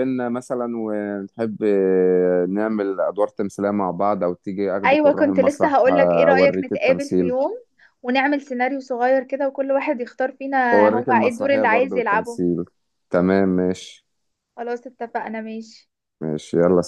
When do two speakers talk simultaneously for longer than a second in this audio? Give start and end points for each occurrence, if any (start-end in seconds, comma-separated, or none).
4.8-7.3, 10.7-12.4